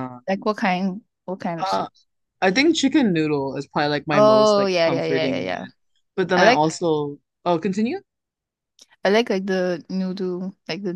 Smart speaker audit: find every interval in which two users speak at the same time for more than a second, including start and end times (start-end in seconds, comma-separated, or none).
4.1-5.7